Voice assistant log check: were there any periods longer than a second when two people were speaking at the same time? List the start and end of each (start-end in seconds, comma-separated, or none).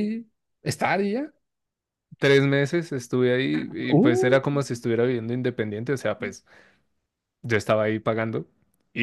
none